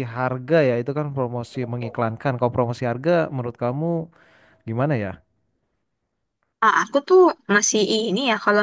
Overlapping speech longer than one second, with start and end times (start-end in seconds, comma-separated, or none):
none